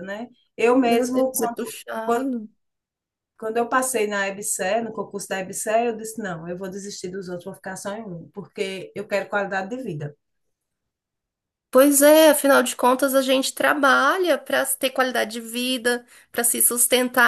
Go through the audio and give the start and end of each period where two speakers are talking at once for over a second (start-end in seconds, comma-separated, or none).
0.8-2.3